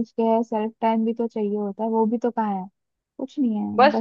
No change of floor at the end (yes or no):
no